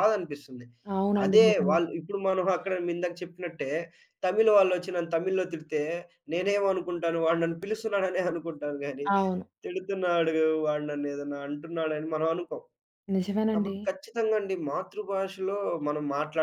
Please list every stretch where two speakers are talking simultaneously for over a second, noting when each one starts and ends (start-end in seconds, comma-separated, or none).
none